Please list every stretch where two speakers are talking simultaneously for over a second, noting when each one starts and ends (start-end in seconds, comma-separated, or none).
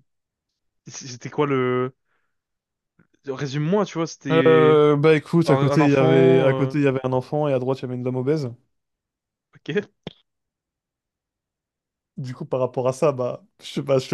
5.4-6.7